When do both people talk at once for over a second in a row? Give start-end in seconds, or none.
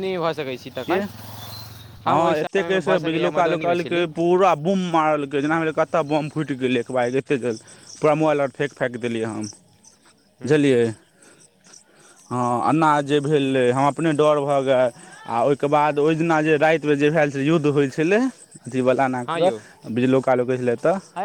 2.1-4.1